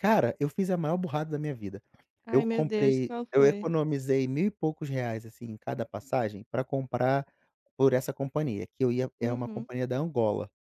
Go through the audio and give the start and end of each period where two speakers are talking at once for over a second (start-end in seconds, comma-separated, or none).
2.3-3.7